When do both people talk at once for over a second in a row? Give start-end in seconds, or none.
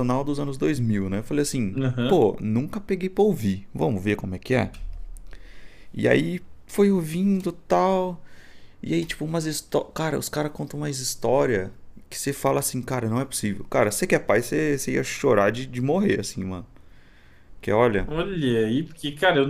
none